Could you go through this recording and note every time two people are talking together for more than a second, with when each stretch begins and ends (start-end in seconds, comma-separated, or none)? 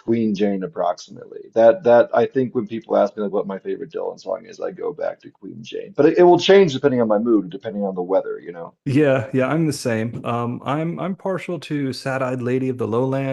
none